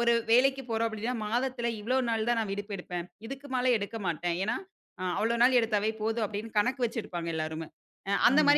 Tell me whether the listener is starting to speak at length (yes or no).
no